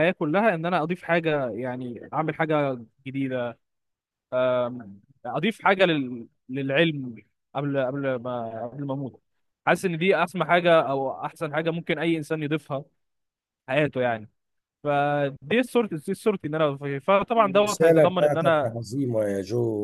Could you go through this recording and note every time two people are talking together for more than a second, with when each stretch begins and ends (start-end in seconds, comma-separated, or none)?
17.4-18.8